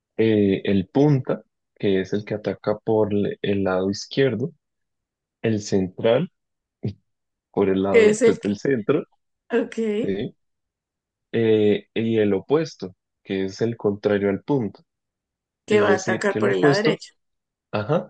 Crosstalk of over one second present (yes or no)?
yes